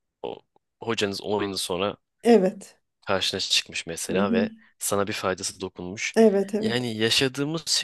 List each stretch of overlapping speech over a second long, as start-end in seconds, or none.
none